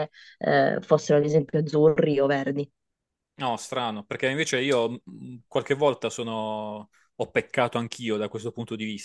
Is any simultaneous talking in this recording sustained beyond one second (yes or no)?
no